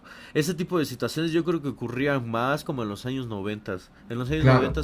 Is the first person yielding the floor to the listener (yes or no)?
no